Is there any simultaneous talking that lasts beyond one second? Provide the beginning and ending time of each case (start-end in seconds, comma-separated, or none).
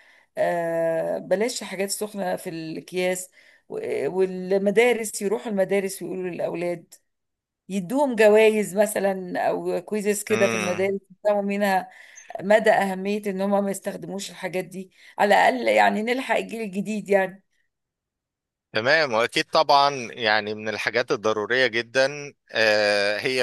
none